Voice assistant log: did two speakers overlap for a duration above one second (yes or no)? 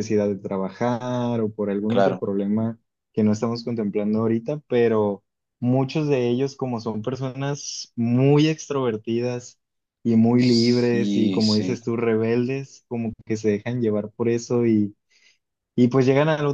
yes